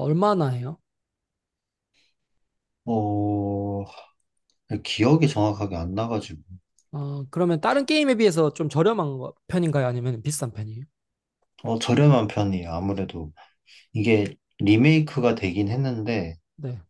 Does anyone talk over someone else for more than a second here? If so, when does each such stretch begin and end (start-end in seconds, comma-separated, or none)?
none